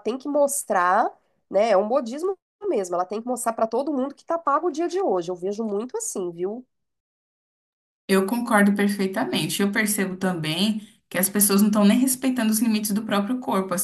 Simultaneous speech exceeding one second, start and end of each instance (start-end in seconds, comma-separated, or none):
none